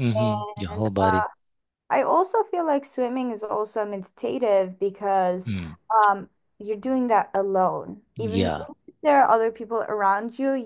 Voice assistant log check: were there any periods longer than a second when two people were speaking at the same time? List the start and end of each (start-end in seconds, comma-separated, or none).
none